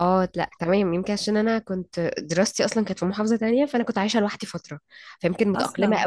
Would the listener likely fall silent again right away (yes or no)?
yes